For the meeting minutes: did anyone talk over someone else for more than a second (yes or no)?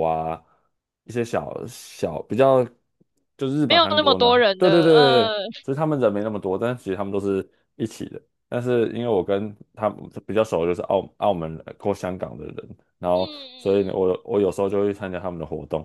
yes